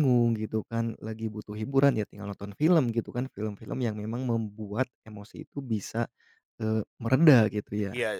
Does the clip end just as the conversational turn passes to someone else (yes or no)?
yes